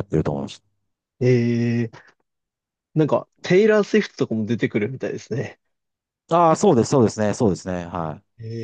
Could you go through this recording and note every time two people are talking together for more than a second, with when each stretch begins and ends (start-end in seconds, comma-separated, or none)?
none